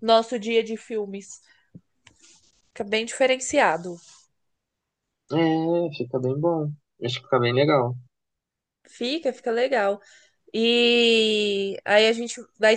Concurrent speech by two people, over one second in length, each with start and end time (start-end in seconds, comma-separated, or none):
none